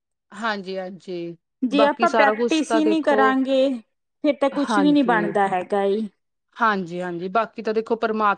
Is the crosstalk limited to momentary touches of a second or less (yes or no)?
no